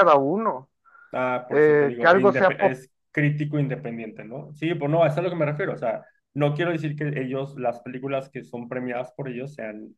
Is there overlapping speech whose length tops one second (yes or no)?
yes